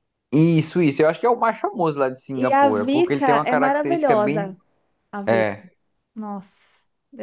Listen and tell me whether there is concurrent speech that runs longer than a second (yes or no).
yes